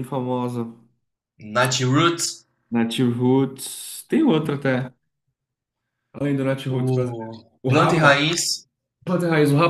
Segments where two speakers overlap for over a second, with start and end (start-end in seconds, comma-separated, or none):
6.7-8.2